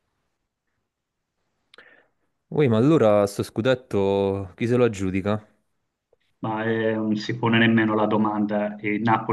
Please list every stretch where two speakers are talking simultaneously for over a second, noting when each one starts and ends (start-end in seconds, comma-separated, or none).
none